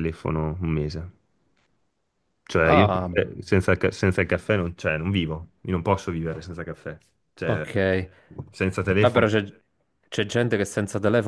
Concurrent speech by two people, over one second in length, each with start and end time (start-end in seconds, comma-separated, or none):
none